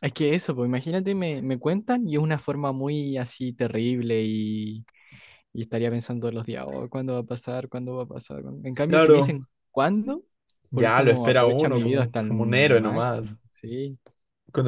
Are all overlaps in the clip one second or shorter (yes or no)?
no